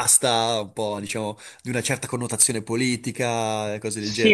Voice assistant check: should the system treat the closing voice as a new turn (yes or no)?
yes